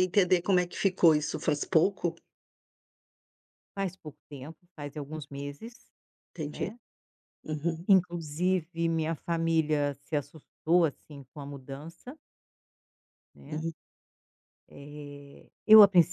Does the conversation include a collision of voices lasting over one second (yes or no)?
no